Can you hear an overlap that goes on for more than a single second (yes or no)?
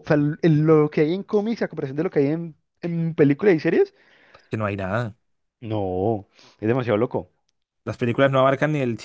no